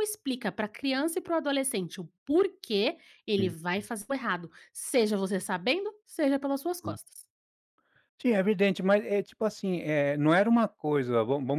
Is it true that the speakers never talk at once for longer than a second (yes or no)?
yes